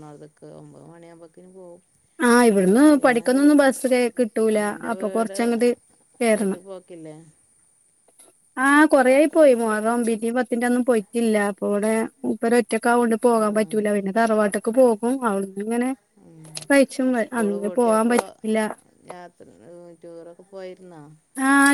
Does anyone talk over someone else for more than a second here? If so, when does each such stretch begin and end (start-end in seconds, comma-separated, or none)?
none